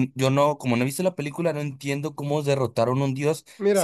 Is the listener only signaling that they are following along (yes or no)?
yes